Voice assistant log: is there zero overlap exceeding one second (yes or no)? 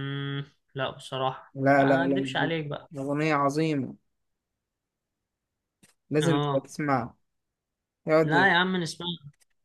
no